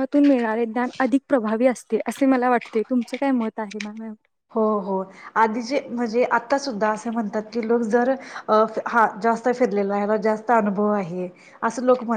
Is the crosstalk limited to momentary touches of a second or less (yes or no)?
yes